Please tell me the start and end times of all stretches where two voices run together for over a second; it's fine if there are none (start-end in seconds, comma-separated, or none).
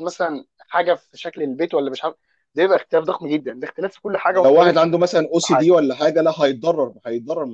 4.3-5.7